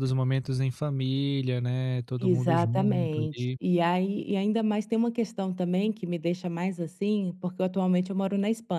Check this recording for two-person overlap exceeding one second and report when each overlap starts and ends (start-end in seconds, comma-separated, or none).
2.2-3.6